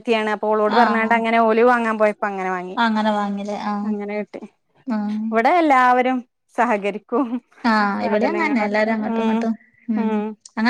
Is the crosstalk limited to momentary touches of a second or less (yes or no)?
no